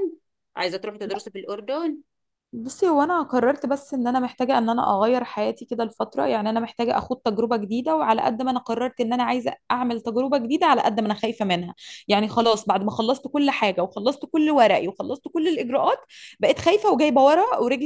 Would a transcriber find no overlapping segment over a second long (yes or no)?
yes